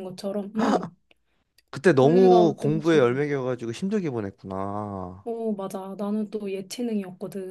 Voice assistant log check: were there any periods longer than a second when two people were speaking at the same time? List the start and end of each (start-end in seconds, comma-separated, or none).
2.0-3.3